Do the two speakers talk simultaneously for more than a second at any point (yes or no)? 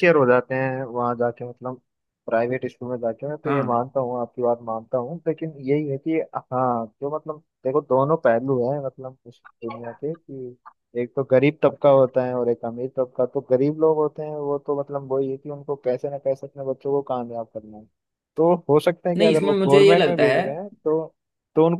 yes